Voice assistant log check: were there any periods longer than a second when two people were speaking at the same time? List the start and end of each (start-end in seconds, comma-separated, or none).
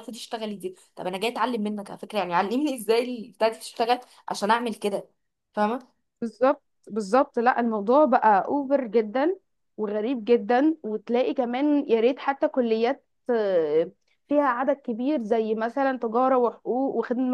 none